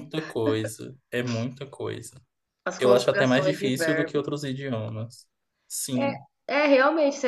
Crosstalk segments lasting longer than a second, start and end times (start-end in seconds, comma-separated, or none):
2.8-4.2